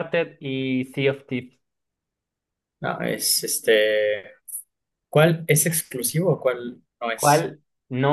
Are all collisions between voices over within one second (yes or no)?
yes